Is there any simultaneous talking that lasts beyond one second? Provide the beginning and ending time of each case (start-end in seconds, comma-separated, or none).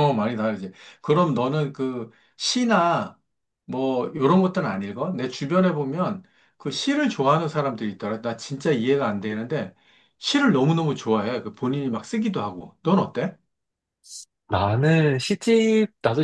none